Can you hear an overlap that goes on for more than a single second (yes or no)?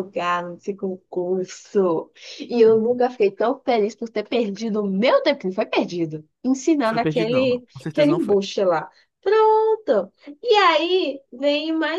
yes